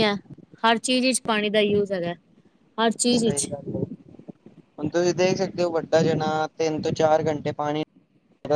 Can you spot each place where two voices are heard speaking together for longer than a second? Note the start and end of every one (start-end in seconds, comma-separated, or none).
none